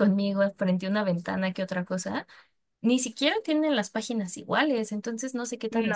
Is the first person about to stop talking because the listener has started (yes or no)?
no